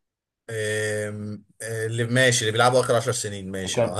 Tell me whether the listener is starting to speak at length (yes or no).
yes